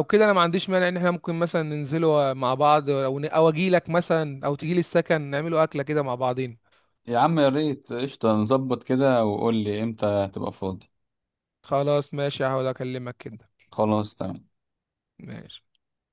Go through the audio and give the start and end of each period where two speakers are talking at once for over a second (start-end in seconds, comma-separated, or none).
none